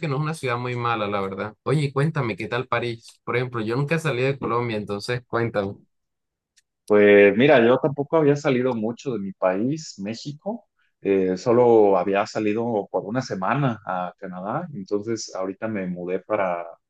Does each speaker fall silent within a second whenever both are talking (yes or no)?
yes